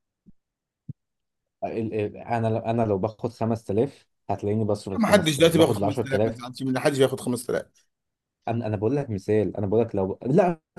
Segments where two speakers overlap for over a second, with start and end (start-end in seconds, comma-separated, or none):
5.0-6.4